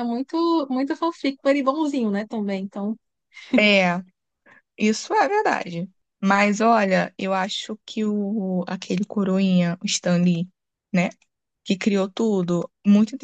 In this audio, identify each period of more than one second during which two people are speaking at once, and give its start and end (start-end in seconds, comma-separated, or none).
none